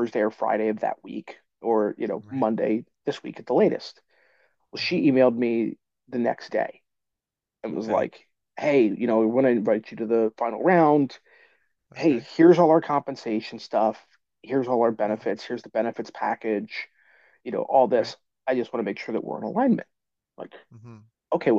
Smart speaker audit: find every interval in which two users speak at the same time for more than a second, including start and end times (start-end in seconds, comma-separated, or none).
none